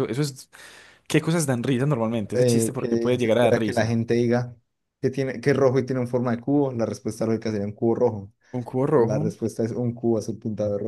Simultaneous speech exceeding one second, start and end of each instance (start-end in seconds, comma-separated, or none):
2.3-4.0